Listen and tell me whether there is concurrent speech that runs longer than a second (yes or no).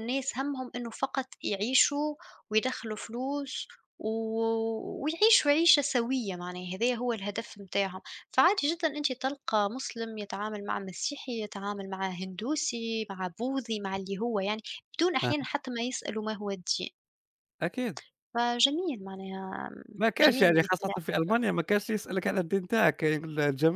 yes